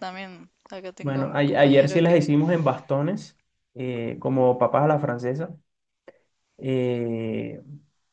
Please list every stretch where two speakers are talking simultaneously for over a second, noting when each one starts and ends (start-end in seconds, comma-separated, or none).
1.0-2.3